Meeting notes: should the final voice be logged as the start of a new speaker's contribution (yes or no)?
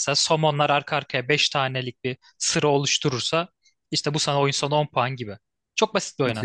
yes